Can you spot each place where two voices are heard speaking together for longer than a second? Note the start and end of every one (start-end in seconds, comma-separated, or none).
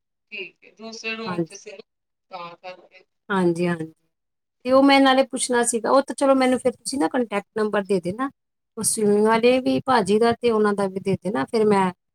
none